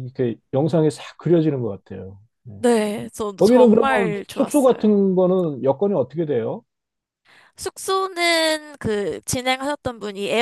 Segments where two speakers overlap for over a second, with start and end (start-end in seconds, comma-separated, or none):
3.4-4.8